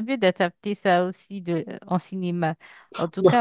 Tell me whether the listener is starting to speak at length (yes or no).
no